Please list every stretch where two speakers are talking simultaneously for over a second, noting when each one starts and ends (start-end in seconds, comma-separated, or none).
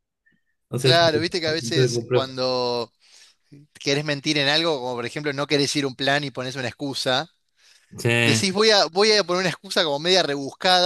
0.8-2.3